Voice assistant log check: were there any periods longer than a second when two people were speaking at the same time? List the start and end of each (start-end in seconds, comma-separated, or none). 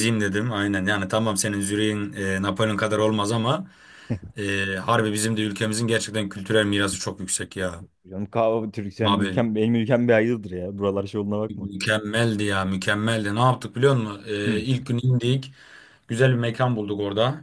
none